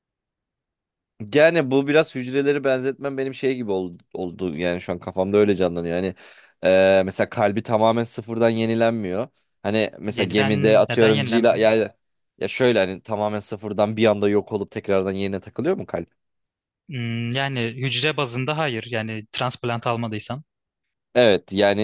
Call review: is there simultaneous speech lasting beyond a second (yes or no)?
yes